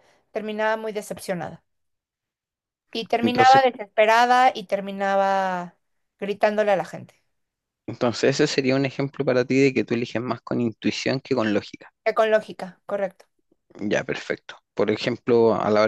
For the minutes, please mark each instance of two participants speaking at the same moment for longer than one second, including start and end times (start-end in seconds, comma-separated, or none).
none